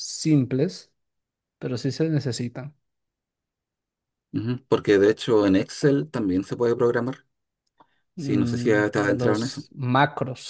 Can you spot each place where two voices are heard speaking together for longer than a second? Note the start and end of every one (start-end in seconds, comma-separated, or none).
8.2-9.6